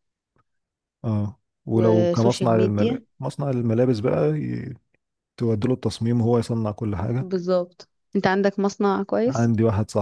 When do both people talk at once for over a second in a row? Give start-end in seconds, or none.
1.7-3.0